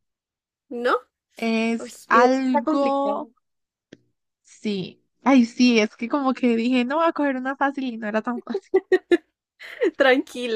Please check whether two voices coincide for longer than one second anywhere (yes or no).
yes